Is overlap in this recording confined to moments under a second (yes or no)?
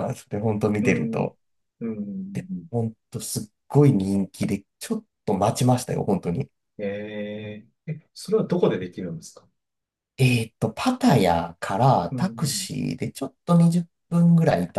yes